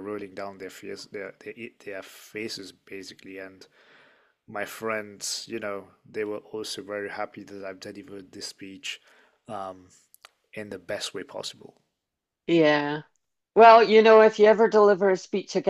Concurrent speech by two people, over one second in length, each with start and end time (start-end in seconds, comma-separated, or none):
none